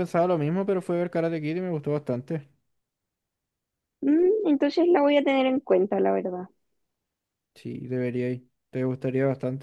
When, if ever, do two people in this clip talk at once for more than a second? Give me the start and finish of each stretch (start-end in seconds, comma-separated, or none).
none